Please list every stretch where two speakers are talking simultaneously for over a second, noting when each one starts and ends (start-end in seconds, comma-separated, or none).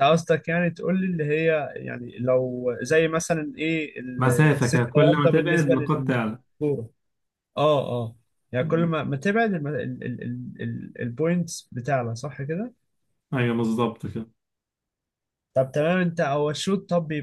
4.2-6.4